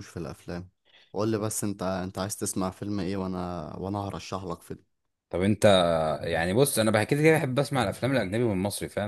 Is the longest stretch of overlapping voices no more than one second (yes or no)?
yes